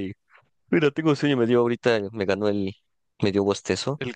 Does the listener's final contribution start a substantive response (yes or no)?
no